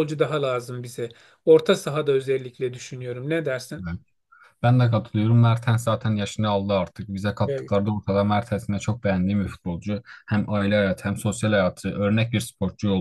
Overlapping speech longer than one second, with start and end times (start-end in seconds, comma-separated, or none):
none